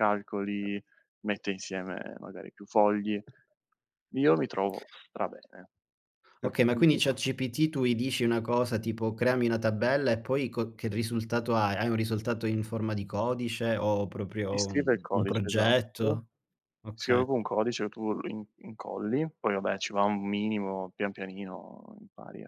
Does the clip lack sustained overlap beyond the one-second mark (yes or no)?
no